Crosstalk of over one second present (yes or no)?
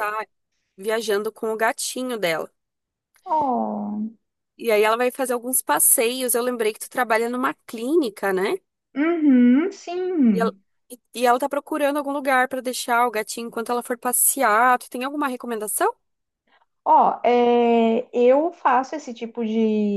no